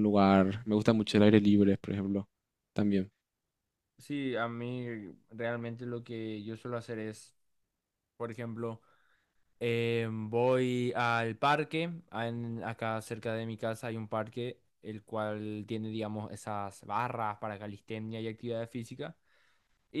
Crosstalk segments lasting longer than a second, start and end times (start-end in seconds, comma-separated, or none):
none